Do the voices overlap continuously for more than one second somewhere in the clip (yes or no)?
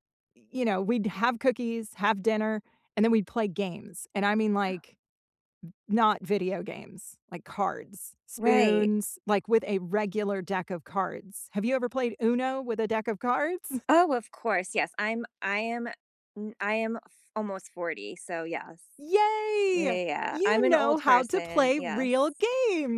yes